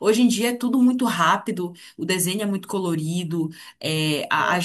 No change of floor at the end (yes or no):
yes